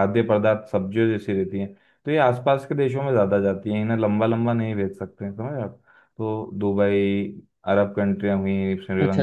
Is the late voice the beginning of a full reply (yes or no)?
no